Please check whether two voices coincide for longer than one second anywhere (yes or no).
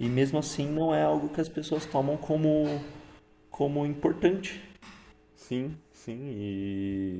no